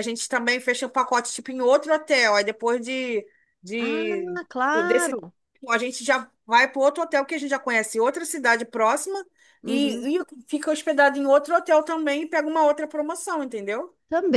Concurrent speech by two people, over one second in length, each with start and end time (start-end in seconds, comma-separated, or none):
3.8-5.2